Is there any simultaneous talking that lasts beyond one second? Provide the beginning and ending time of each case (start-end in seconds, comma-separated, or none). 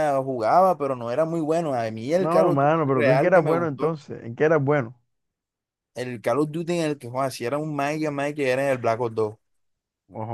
2.1-4.0